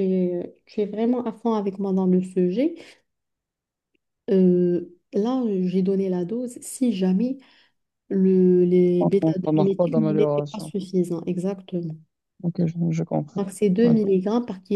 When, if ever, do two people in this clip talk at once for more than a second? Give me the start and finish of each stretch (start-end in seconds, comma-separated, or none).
9.0-10.7